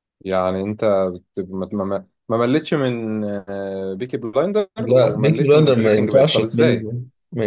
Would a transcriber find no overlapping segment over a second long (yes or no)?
no